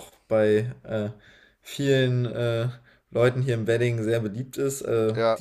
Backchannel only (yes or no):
yes